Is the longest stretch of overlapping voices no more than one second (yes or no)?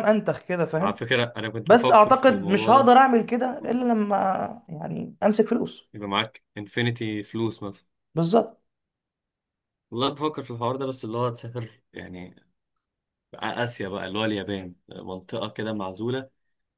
no